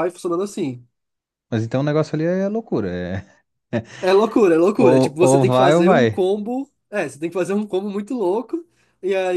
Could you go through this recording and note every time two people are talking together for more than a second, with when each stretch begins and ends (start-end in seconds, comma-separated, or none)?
4.8-6.2